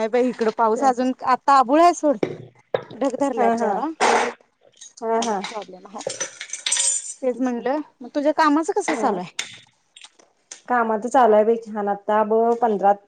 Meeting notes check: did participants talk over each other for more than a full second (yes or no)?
no